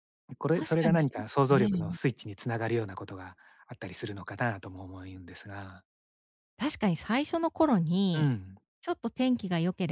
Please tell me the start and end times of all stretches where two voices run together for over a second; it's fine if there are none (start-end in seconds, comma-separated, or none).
0.5-2.0